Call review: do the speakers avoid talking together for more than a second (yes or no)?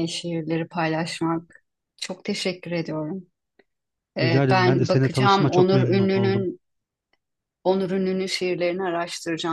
no